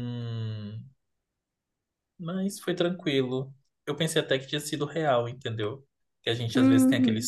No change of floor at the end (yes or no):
yes